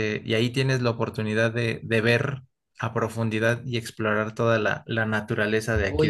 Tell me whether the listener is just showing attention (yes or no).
no